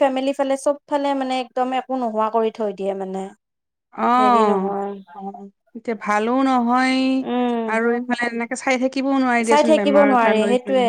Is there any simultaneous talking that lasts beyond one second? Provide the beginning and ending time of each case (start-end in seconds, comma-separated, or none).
none